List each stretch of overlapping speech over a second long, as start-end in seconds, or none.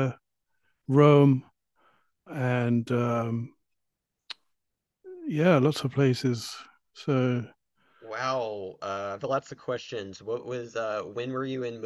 none